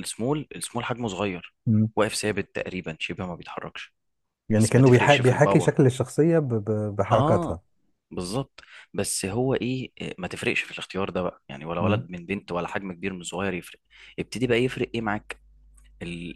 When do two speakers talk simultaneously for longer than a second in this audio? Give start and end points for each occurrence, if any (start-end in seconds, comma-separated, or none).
4.6-5.8